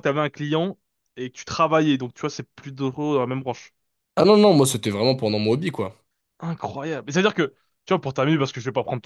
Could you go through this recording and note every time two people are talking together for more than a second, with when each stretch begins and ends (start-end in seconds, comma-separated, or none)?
none